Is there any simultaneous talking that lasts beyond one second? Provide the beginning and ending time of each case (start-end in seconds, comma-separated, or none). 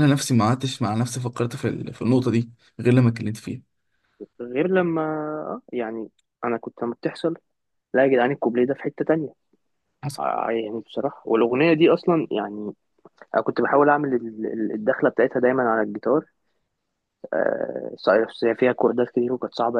none